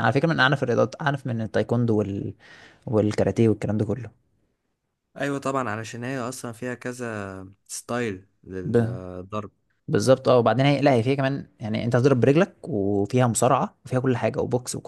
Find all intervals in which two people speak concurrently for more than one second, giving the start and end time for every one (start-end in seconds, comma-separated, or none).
none